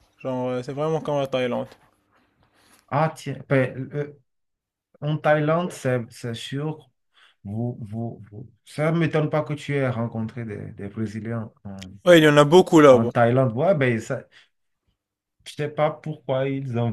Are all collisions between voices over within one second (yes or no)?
yes